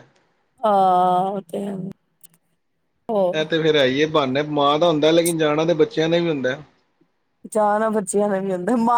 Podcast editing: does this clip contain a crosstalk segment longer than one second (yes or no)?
no